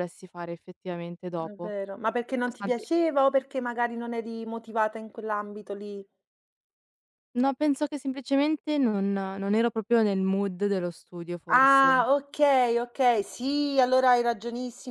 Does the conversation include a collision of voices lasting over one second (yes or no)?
no